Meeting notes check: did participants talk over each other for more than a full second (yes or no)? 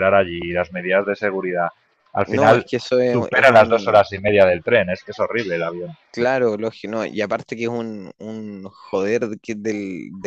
yes